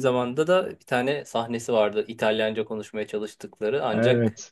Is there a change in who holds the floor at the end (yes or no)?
no